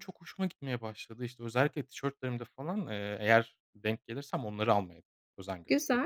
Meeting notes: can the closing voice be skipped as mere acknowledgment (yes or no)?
no